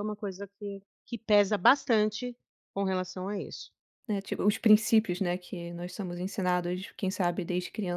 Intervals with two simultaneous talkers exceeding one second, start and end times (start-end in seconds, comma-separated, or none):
none